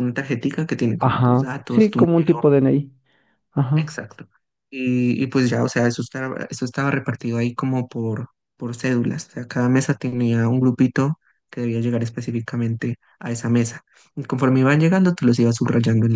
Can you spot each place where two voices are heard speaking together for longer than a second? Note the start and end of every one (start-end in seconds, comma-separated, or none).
1.0-2.5